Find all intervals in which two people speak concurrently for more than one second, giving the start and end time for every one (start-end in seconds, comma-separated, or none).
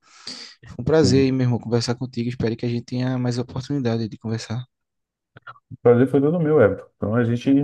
none